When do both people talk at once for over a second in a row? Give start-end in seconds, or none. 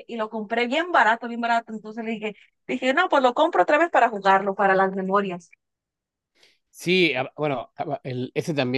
none